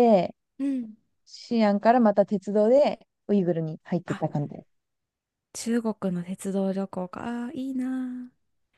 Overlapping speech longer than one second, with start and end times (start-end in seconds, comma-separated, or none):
none